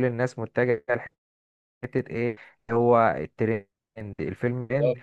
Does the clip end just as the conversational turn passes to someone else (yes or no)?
no